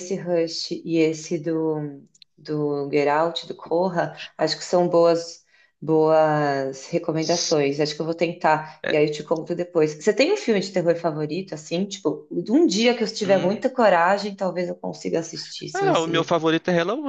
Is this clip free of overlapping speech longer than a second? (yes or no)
yes